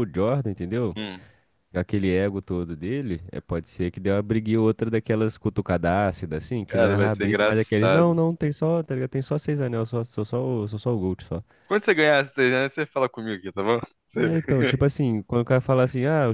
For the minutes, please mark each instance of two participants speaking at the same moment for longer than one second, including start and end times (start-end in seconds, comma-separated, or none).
6.7-8.2